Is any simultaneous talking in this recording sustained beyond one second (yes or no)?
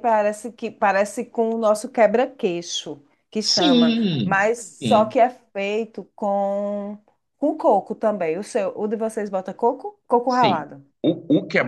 yes